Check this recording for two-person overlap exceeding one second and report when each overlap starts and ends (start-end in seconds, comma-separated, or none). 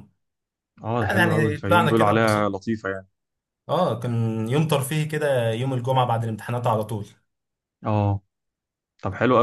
1.1-2.5